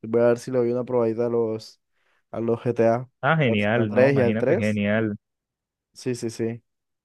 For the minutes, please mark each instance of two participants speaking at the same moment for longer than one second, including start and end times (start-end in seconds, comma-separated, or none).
3.5-4.8